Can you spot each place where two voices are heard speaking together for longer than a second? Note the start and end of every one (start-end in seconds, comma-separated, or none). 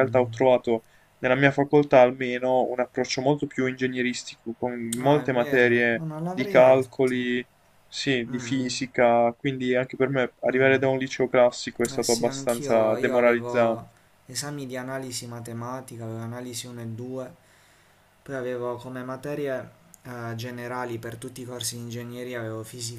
5.0-7.4, 11.9-13.9